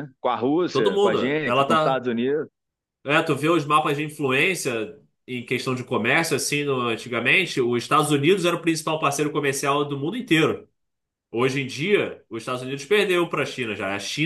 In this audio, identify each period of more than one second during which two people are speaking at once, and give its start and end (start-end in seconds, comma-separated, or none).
0.7-2.0